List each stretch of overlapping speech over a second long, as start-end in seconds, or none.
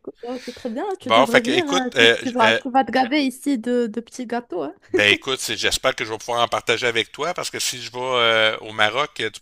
1.0-2.6